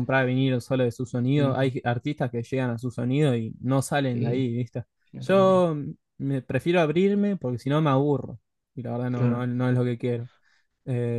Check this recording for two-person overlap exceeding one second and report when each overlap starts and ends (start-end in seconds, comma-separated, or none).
none